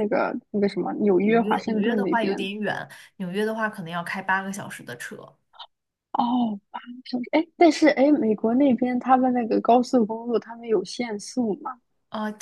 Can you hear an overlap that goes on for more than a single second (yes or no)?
yes